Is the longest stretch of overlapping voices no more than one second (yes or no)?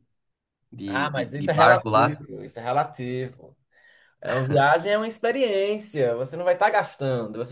no